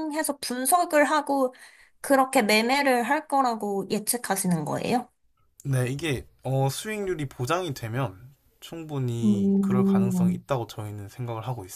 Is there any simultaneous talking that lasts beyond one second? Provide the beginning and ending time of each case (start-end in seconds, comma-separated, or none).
9.2-10.4